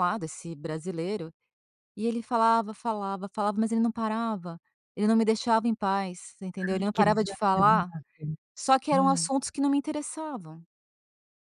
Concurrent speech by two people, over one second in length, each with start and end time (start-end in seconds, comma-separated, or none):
6.6-7.9